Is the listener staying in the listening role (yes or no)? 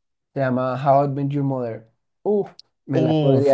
yes